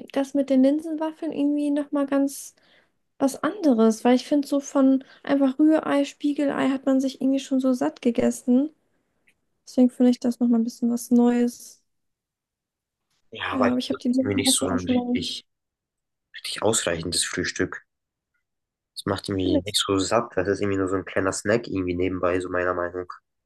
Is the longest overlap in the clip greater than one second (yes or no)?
yes